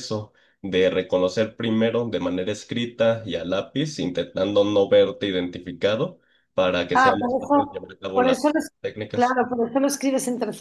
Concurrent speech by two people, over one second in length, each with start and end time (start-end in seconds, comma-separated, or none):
6.9-8.4